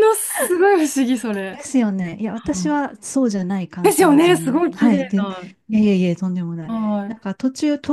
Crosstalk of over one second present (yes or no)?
yes